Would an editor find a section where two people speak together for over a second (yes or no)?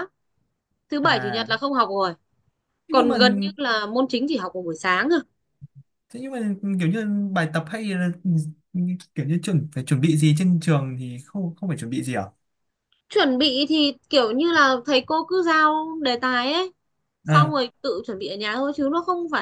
no